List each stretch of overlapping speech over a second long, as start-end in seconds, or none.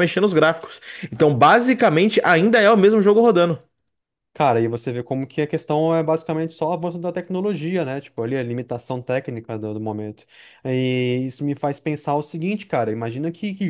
none